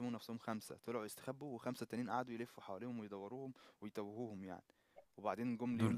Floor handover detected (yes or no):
yes